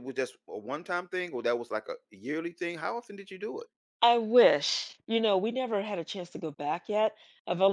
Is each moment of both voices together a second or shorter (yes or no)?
yes